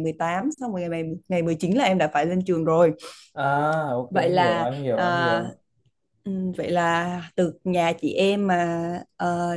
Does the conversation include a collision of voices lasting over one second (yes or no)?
yes